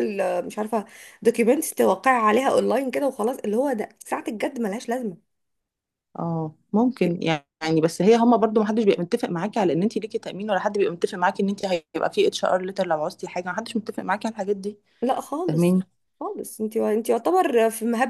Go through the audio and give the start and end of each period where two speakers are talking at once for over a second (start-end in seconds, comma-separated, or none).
none